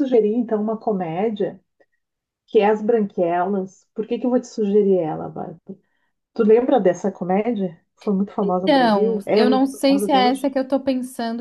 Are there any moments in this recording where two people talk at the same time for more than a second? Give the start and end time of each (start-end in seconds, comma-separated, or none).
8.4-10.4